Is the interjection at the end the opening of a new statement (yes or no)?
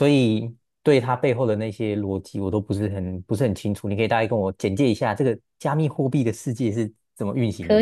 yes